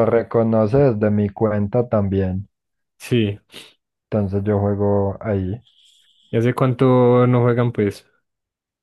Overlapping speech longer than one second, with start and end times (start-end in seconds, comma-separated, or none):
none